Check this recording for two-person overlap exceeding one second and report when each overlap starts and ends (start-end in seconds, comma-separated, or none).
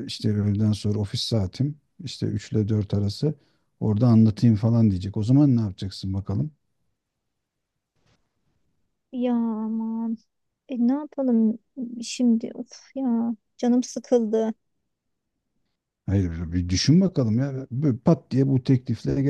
none